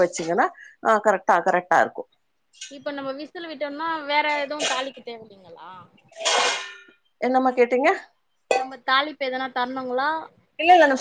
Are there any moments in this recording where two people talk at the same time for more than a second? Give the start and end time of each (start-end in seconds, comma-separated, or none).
none